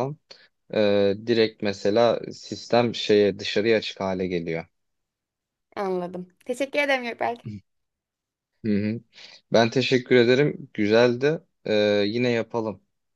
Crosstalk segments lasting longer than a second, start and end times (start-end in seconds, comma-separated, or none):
none